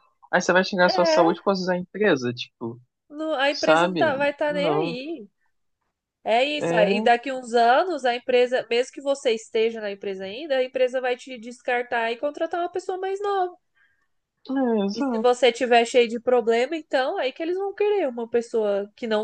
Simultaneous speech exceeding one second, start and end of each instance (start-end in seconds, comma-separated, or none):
3.5-5.0